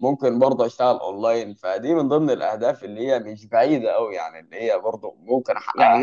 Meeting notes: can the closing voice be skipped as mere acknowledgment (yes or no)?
no